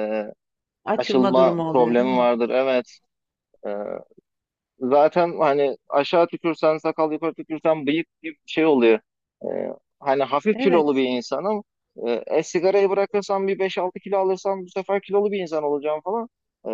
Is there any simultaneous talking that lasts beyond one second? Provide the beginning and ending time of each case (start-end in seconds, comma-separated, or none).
1.0-2.3